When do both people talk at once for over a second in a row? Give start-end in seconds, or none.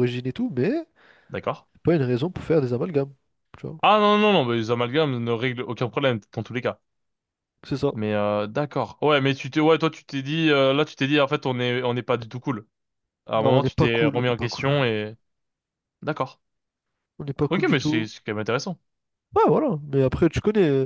13.3-14.6